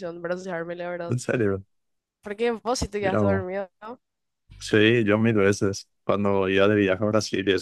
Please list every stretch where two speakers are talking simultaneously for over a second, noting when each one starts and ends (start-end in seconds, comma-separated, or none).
none